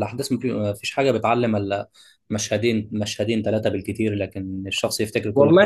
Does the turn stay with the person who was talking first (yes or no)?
no